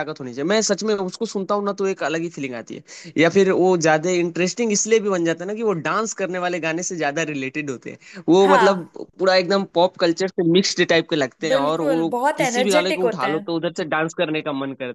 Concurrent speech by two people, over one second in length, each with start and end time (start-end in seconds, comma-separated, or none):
11.5-13.5